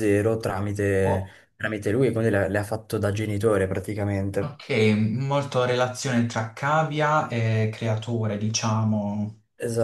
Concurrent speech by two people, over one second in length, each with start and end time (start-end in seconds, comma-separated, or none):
none